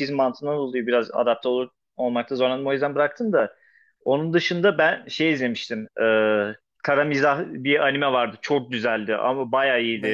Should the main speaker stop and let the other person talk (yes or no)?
no